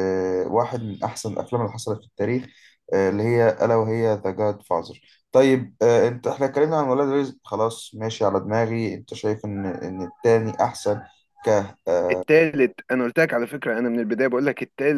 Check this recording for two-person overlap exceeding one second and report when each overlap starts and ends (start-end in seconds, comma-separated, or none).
none